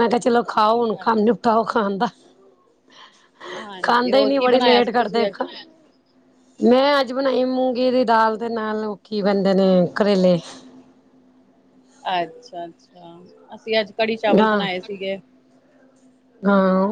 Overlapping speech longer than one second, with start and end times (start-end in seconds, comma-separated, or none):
3.8-5.3